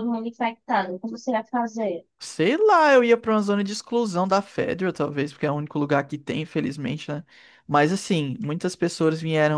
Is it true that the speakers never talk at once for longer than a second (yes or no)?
yes